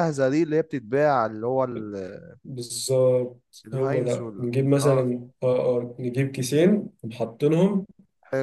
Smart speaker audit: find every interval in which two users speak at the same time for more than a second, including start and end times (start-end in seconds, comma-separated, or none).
3.7-5.1